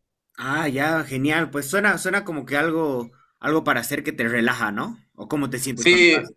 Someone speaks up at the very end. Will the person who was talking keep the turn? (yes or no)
no